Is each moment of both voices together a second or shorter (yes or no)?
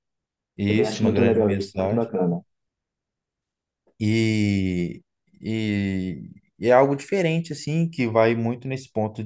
no